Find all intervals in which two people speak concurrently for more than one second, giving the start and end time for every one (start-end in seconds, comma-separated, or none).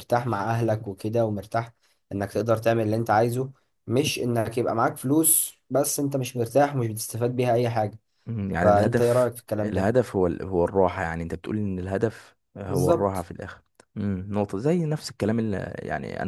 8.6-10.0